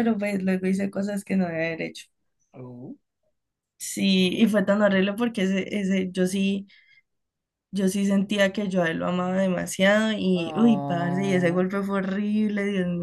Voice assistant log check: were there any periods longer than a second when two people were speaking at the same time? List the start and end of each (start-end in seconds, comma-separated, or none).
10.3-11.7